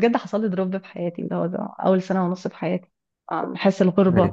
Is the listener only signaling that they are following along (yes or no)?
yes